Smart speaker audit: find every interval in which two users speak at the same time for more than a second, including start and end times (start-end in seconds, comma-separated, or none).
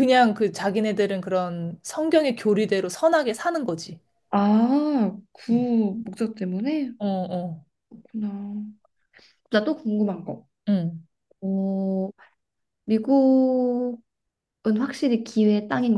none